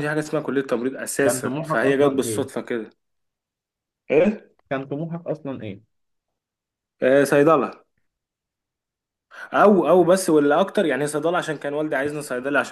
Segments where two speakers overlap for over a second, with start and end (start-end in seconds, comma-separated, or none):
1.2-2.5